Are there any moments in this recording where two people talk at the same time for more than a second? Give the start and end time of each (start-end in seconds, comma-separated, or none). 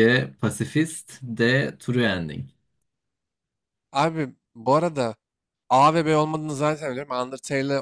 none